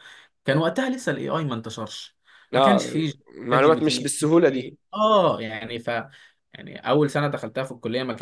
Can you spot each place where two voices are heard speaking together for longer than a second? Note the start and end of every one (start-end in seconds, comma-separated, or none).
3.5-4.7